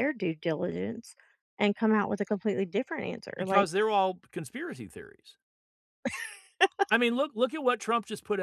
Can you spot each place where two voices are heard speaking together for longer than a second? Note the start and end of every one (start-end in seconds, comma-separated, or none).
none